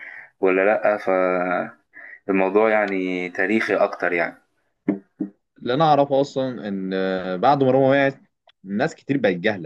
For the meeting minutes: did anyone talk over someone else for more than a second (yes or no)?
no